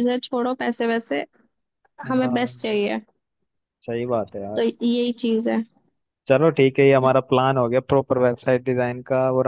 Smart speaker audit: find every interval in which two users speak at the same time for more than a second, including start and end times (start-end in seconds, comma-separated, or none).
none